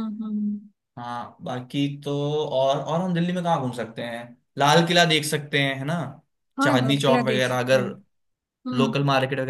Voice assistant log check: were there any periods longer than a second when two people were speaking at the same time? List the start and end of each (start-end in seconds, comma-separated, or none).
6.6-7.9